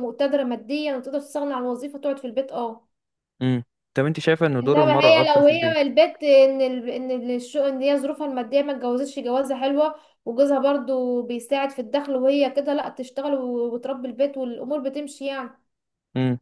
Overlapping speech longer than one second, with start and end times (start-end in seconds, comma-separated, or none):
4.6-5.9